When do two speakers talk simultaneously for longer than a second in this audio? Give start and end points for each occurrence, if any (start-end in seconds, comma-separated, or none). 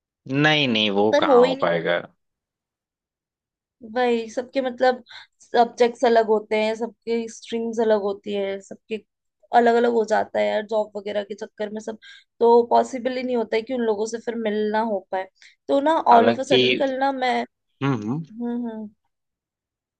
none